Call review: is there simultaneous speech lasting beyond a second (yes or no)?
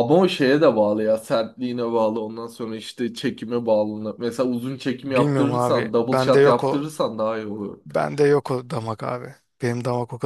yes